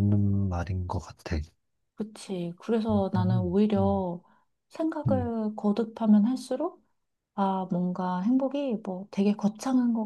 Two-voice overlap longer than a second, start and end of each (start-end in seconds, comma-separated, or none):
none